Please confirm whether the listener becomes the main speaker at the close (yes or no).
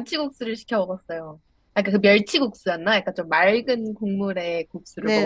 yes